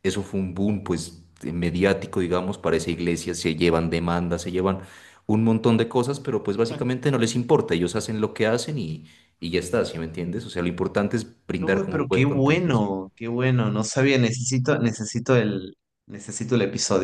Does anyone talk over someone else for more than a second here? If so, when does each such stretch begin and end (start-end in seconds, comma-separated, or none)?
11.6-12.8